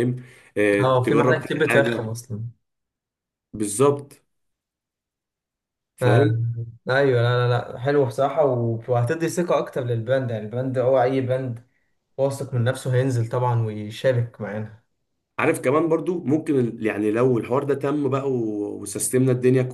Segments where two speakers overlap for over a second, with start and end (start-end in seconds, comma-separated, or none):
0.8-2.1